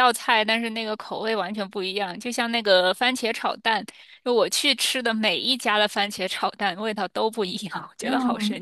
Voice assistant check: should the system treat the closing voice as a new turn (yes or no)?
yes